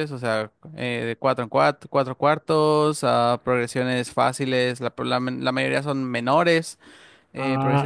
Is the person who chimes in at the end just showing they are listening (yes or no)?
no